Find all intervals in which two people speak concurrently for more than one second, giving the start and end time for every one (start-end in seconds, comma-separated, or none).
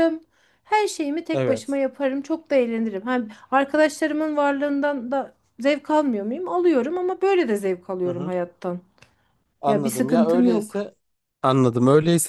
9.7-10.9